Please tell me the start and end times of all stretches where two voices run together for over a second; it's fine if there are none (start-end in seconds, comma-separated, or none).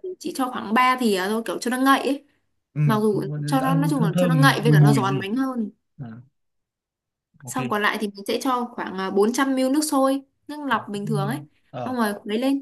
3.6-5.3